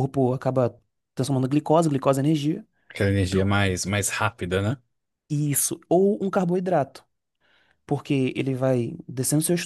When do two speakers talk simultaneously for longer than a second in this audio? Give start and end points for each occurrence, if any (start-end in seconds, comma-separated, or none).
none